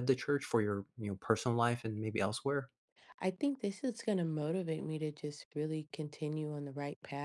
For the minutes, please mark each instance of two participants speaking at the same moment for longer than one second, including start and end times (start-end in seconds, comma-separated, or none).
none